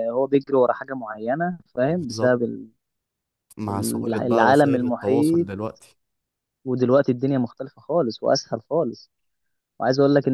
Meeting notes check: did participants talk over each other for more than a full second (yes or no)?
yes